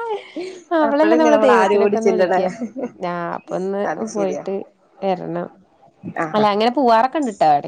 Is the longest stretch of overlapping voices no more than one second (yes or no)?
no